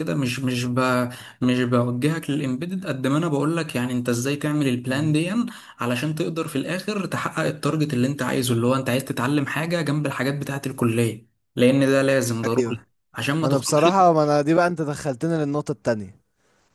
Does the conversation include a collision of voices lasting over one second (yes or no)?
no